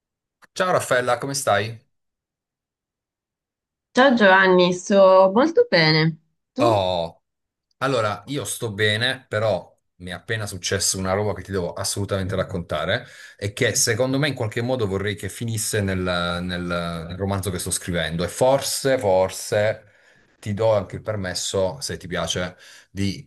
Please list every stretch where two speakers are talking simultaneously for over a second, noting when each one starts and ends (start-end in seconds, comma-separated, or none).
none